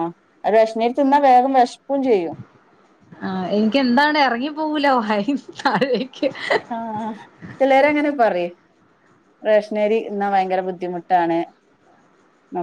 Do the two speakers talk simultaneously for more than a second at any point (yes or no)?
no